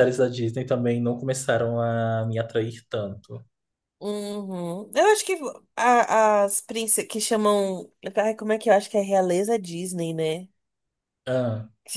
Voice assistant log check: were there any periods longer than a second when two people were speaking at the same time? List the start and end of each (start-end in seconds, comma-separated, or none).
none